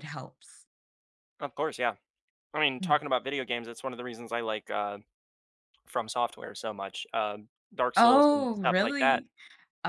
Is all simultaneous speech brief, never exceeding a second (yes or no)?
no